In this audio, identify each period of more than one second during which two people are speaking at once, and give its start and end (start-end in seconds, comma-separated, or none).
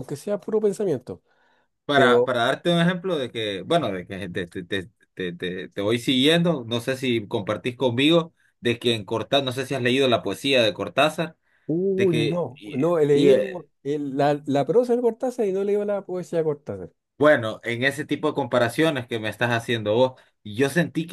11.9-13.7